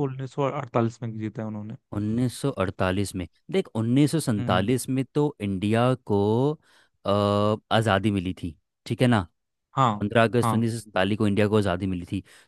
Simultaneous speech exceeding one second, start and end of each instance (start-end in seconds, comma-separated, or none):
none